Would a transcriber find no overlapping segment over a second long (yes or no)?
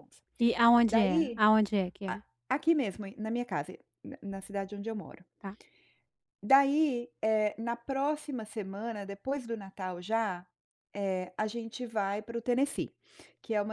yes